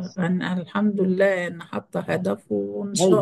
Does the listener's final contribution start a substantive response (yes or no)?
yes